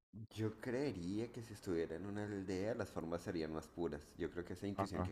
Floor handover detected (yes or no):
no